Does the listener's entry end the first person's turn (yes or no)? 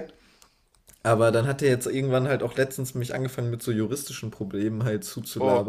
no